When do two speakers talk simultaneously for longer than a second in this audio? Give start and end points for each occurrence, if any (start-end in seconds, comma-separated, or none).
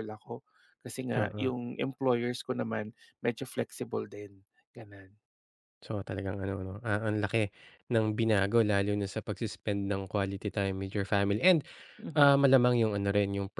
none